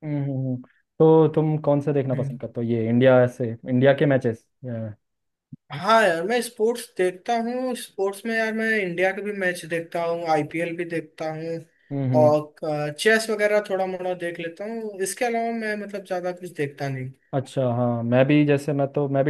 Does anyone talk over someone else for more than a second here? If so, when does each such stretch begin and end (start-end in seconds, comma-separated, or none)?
none